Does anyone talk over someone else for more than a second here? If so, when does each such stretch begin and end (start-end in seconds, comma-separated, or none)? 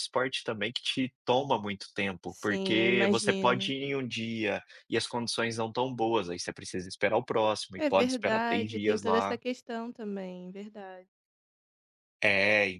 2.3-3.7, 7.8-9.4